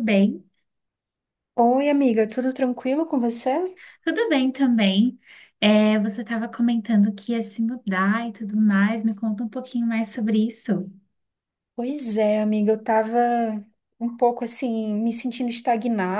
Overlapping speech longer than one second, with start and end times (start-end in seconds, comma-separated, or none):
none